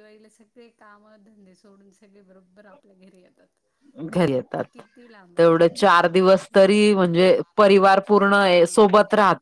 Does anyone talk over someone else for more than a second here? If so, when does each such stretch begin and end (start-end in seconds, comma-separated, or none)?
5.4-6.9